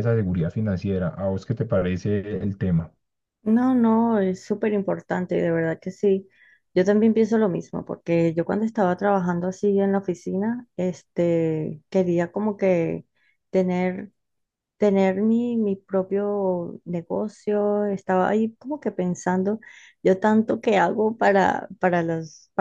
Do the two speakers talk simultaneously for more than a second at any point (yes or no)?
no